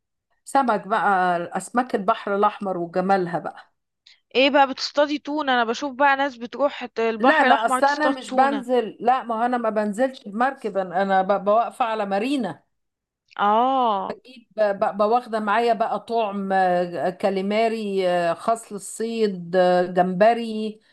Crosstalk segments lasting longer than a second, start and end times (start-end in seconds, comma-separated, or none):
7.2-8.6